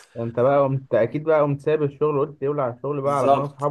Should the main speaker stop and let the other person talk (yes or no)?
yes